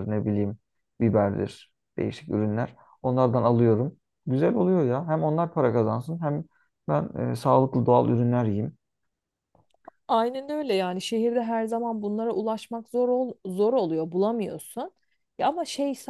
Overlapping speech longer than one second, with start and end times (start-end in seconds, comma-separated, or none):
none